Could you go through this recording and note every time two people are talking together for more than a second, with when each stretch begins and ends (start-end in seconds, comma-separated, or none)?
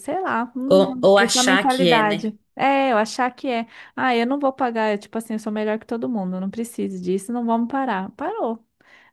0.7-2.3